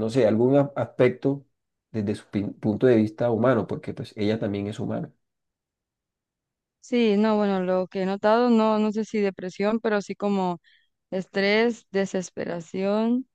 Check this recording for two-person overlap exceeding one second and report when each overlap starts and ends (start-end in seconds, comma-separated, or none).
none